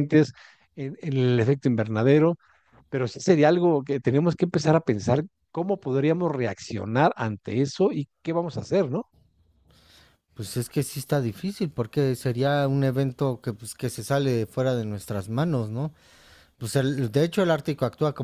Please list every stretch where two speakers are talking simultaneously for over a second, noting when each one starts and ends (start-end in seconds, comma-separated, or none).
none